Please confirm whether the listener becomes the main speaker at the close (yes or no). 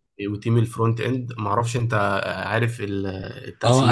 yes